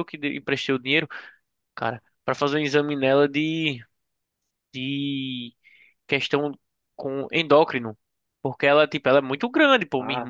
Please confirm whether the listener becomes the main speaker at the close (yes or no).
no